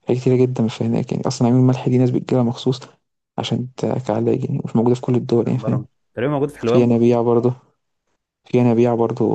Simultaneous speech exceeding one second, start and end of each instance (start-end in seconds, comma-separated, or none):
none